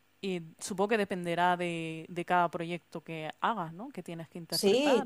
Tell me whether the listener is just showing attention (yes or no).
no